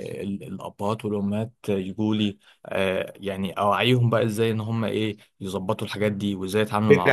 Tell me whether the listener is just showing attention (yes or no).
no